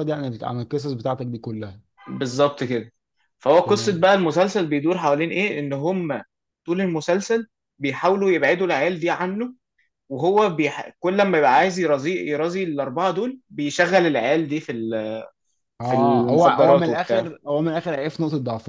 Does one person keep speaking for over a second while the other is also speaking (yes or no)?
yes